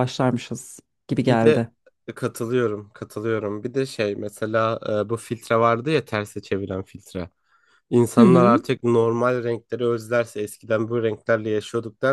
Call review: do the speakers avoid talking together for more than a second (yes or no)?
yes